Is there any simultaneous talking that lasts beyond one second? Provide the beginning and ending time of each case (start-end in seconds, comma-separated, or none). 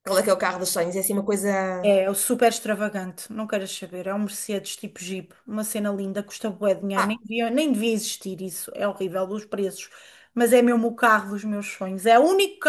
none